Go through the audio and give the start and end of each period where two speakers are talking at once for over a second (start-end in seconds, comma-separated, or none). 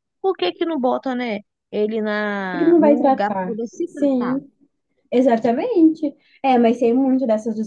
2.5-4.4